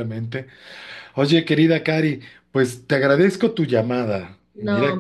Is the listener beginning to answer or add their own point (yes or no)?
yes